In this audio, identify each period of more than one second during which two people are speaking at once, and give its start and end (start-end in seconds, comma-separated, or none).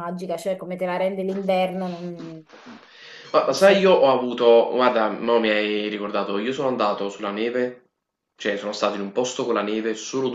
none